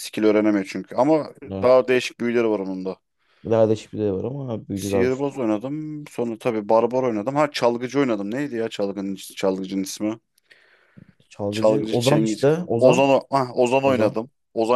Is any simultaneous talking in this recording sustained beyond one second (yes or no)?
yes